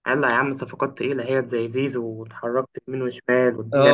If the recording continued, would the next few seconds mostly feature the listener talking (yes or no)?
yes